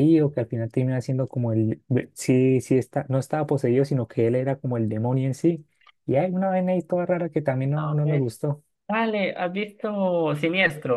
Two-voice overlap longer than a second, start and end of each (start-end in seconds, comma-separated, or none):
none